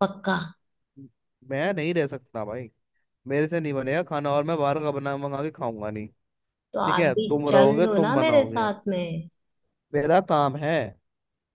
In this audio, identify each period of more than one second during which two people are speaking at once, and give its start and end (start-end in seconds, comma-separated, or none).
6.8-8.7